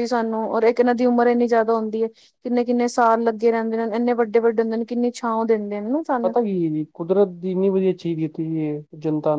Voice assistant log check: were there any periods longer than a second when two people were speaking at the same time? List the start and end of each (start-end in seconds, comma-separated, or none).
none